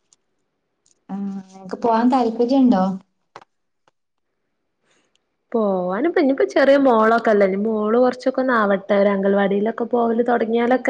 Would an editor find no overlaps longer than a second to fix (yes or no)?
yes